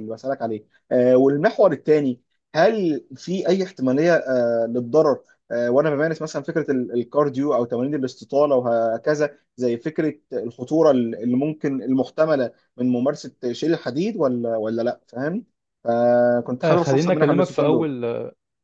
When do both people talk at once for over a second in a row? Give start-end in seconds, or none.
16.6-17.9